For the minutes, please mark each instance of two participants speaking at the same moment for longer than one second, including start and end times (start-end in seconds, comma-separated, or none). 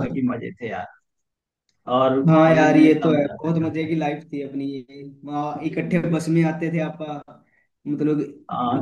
2.3-3.9